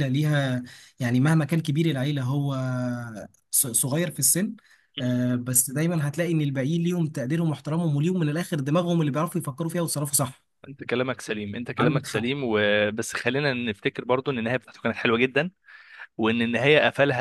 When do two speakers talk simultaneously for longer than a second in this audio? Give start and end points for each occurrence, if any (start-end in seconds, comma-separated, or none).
none